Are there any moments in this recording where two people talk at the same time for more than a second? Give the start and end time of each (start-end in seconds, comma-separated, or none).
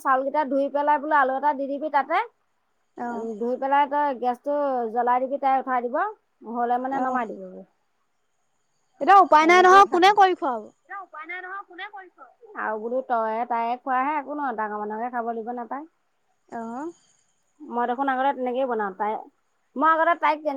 none